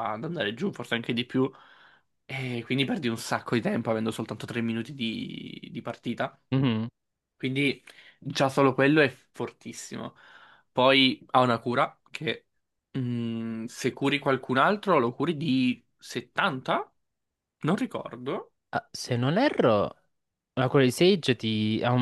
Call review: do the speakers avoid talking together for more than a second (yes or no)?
yes